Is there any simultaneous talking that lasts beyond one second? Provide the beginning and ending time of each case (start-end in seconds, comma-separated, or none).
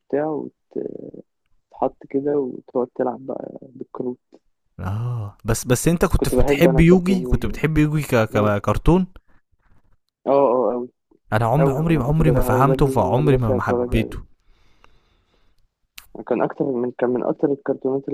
6.1-7.6, 11.6-14.2